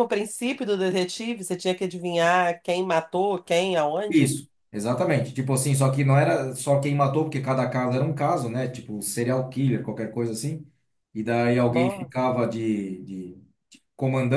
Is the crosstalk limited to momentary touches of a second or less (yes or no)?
yes